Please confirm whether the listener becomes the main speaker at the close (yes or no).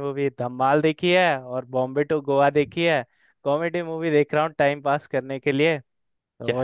no